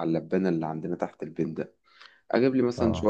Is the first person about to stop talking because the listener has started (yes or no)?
no